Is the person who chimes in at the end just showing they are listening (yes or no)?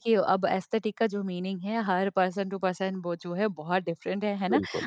yes